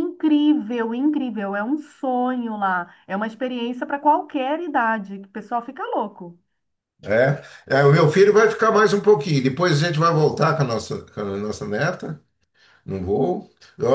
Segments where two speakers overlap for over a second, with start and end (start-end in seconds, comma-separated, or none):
none